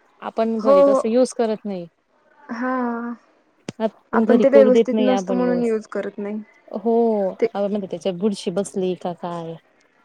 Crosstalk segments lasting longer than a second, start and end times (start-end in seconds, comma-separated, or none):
4.4-5.7